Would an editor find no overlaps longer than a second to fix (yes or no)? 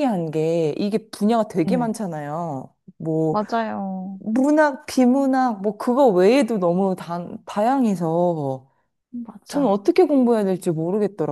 yes